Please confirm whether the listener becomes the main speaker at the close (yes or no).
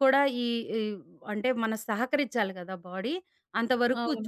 no